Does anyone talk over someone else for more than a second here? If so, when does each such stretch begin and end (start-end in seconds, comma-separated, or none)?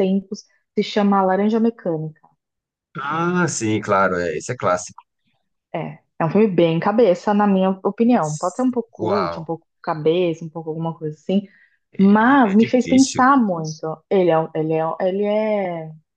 12.0-13.2